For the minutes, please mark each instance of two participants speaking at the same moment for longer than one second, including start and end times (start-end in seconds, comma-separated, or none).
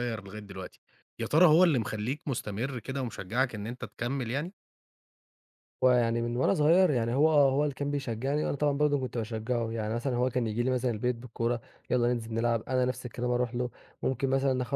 none